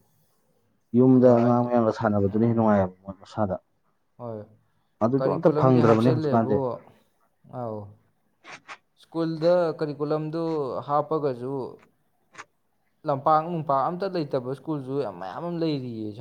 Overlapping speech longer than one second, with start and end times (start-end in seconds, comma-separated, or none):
5.2-6.6